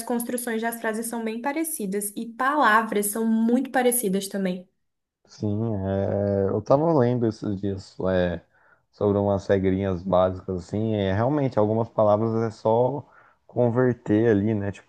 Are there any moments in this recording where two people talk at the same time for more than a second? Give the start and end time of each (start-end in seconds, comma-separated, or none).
none